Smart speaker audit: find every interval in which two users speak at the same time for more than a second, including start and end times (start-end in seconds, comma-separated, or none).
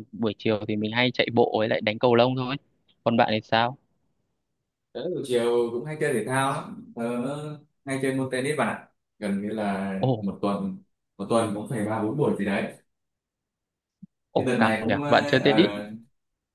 14.3-15.7